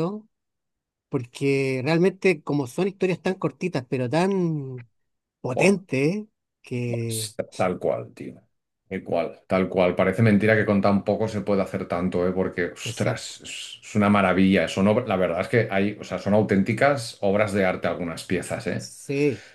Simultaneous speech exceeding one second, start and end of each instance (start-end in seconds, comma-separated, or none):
none